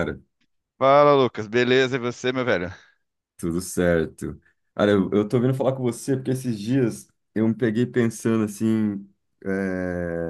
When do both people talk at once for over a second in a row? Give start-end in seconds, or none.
none